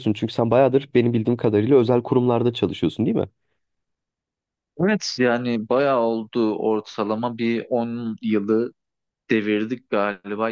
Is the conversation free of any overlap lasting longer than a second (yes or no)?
yes